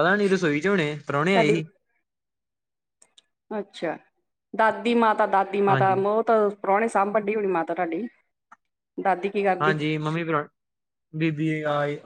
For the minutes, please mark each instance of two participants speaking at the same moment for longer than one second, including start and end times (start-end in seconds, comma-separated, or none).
none